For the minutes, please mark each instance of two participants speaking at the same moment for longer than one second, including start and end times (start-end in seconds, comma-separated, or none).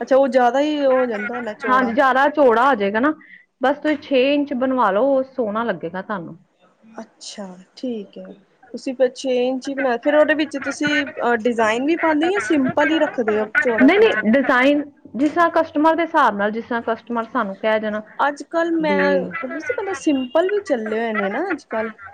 none